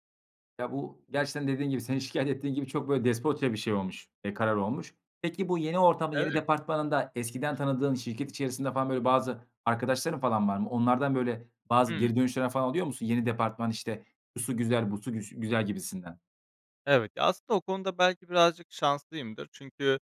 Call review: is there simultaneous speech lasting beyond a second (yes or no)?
no